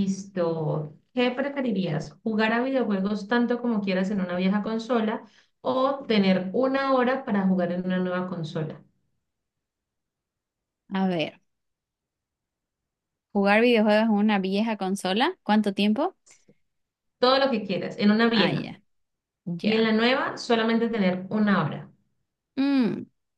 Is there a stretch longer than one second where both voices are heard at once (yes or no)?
no